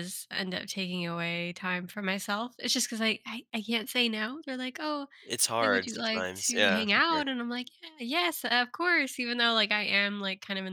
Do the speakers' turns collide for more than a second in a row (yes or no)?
yes